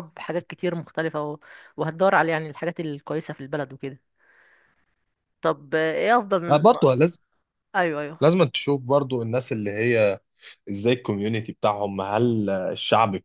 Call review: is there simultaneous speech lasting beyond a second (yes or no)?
no